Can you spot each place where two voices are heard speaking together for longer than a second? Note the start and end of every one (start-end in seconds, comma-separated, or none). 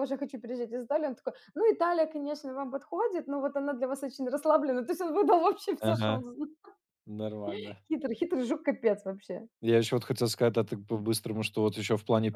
none